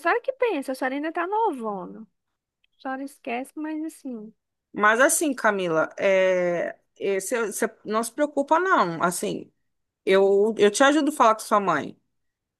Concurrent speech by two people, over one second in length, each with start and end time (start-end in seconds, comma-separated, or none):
none